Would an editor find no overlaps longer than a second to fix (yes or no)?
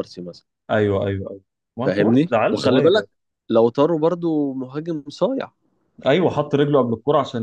no